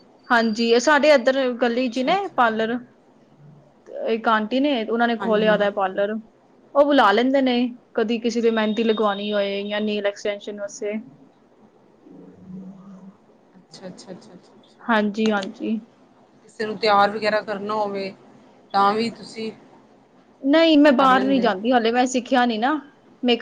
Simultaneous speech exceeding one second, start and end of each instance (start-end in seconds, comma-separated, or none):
none